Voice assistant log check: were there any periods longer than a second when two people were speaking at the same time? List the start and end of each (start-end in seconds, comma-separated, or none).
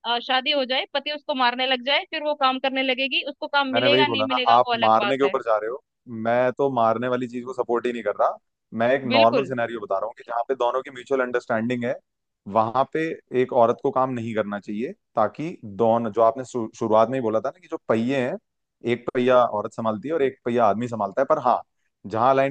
3.7-5.3